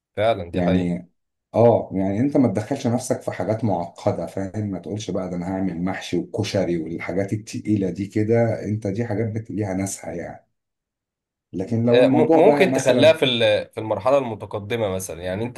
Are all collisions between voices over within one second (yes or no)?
no